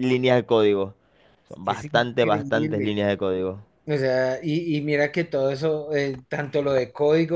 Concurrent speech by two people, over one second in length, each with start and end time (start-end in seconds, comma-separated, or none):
1.6-3.0